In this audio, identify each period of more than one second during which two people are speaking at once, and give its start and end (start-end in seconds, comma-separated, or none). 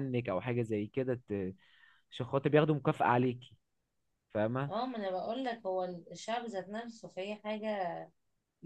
none